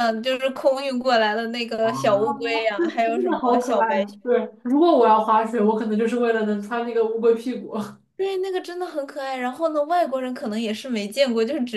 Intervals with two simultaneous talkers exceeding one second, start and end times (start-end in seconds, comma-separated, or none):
1.8-4.0